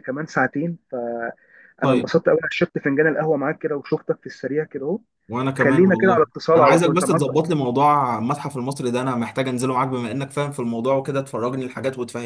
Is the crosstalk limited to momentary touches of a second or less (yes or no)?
no